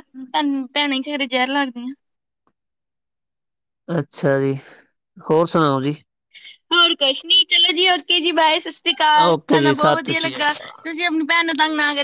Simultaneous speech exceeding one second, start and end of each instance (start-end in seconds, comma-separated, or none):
9.3-10.7